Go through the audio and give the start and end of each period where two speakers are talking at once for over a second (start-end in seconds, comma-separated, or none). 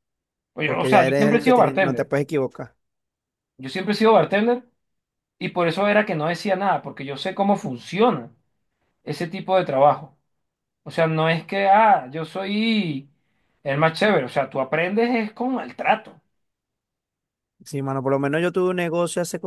0.6-2.1